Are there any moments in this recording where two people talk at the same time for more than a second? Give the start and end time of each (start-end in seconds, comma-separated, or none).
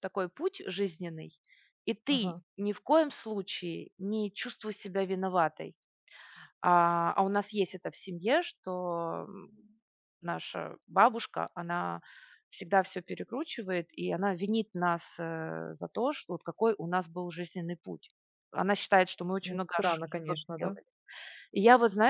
19.4-20.8